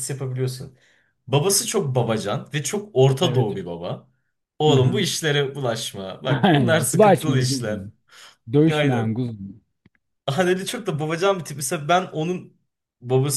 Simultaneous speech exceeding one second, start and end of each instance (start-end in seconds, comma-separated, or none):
6.4-7.8